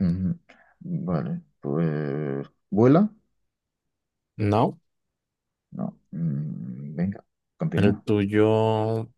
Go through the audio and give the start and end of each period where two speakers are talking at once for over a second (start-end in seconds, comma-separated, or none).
none